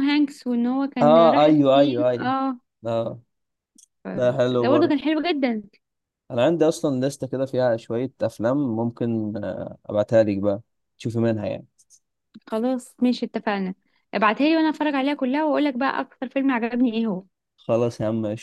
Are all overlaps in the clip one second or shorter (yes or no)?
no